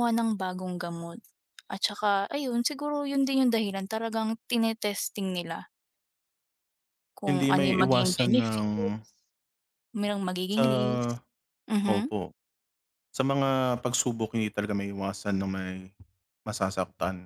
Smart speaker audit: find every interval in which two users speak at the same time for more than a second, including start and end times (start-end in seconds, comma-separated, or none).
7.3-8.7